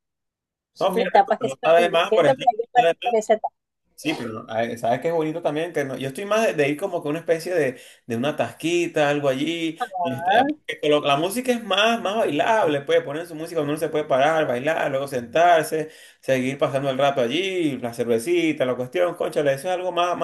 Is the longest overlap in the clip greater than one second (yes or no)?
yes